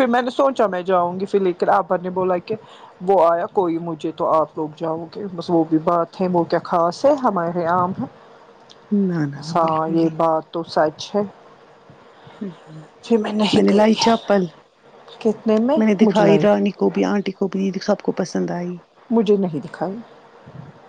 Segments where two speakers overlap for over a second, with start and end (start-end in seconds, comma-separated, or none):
none